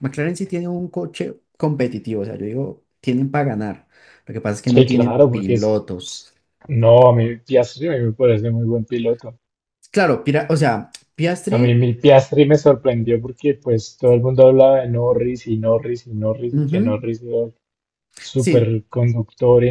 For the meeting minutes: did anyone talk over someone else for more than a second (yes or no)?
yes